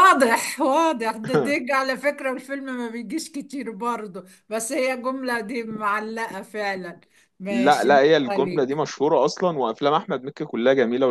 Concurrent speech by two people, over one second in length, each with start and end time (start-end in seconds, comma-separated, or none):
7.5-8.9